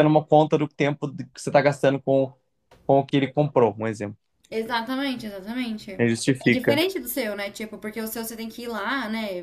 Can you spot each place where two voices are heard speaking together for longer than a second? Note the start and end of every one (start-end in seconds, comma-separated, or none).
none